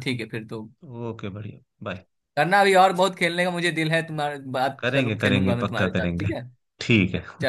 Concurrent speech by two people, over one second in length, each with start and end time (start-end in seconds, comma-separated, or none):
4.8-6.3